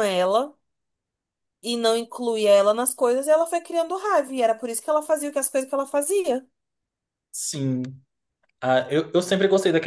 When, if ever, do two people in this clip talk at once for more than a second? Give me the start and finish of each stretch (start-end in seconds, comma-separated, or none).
none